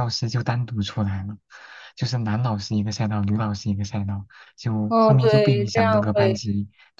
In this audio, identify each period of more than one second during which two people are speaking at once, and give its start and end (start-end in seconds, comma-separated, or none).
4.9-6.4